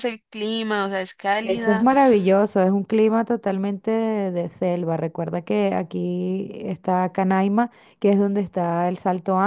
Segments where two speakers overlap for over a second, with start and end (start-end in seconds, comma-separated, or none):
none